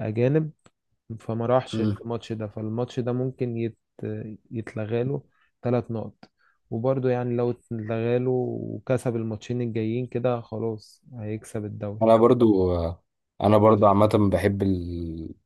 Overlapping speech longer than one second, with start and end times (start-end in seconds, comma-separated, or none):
none